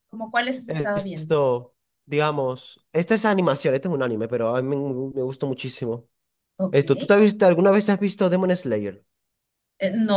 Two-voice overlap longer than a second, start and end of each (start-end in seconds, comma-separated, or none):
none